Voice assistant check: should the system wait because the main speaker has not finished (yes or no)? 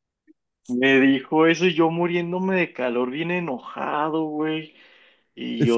no